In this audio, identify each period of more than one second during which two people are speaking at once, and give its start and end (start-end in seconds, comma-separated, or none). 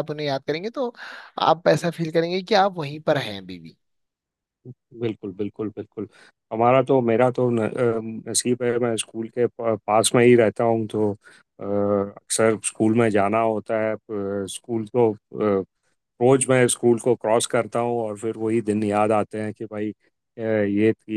none